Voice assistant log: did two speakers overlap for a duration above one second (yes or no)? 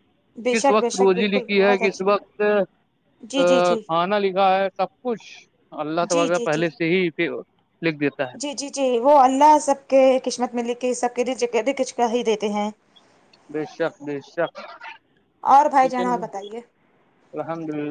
yes